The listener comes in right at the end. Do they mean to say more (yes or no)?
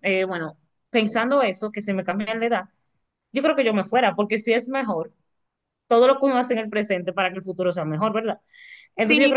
yes